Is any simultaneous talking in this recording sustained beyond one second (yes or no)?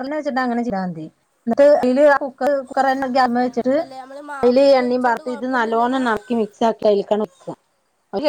yes